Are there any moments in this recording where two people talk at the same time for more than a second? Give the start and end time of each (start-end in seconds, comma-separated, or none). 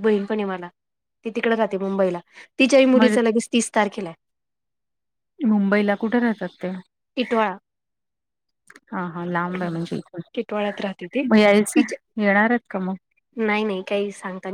none